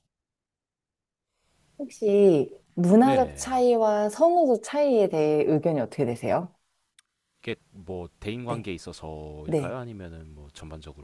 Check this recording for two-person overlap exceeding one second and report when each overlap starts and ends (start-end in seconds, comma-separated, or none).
none